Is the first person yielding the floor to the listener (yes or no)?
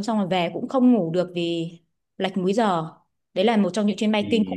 yes